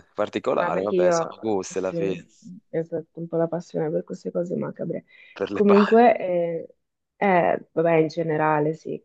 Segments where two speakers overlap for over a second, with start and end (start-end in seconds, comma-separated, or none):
0.5-2.2